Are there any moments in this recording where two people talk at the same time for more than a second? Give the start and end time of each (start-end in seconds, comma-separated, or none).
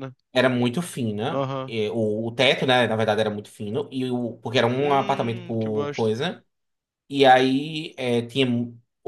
4.8-6.1